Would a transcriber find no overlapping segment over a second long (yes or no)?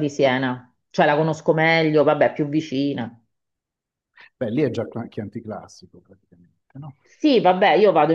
yes